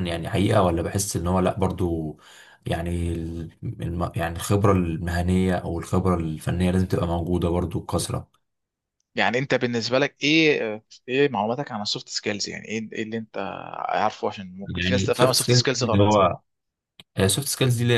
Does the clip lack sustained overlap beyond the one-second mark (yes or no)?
no